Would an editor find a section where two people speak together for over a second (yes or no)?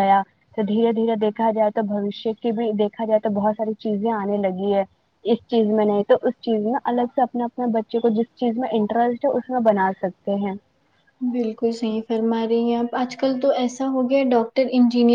no